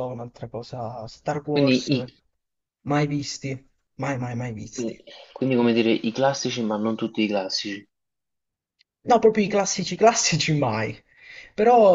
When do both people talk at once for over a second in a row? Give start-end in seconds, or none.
none